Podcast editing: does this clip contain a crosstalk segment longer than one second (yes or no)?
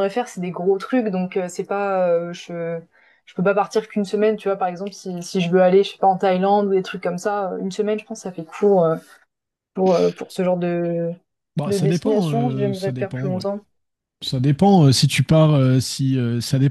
yes